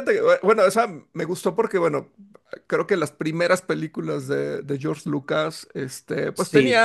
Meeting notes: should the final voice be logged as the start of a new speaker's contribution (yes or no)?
no